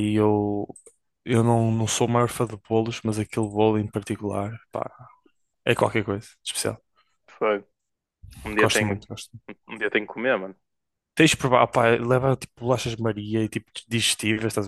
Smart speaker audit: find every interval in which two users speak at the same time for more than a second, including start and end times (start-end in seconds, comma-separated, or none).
none